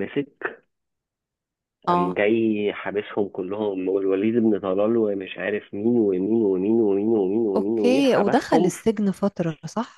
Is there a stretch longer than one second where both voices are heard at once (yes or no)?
yes